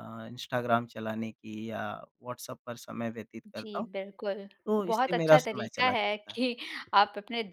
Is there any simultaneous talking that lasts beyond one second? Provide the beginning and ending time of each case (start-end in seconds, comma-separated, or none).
4.7-6.4